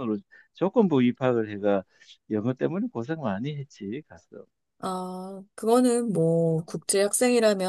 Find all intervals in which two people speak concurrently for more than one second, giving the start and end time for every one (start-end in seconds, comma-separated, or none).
none